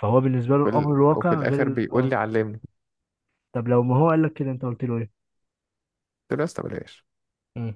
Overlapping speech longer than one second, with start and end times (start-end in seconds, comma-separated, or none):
0.5-2.1